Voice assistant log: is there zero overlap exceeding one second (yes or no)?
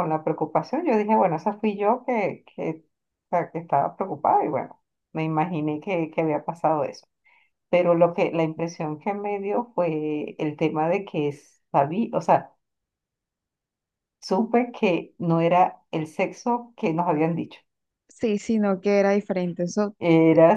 yes